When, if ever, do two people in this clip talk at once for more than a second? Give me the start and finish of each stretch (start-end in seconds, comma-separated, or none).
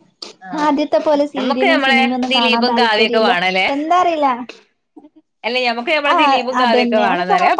1.4-3.2